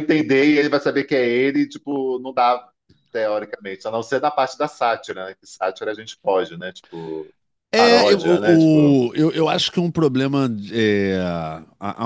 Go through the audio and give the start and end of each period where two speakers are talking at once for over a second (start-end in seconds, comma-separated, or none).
7.8-9.0